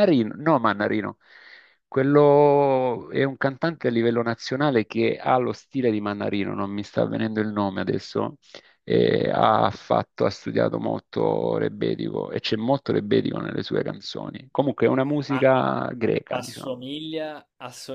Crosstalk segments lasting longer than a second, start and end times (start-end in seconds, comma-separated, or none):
none